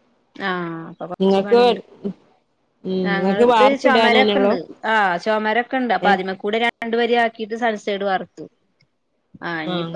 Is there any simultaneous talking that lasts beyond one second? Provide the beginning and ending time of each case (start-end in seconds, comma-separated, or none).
3.1-4.5